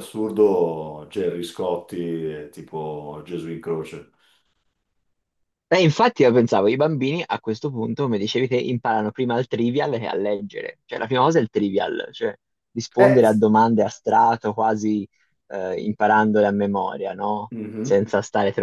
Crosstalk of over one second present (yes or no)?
no